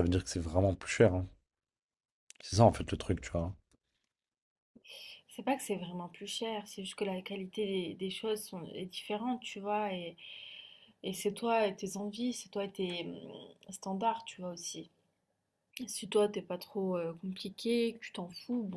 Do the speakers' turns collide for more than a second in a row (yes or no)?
no